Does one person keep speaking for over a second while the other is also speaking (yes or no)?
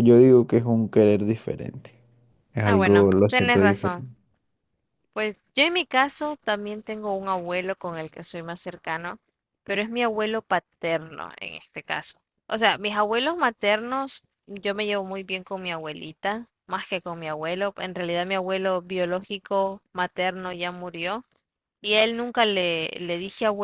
yes